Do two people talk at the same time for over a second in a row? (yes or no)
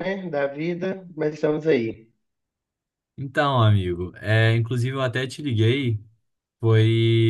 no